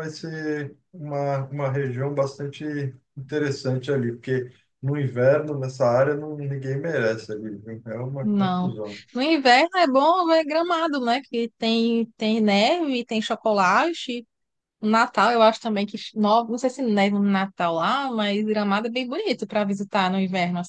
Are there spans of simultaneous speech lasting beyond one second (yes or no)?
no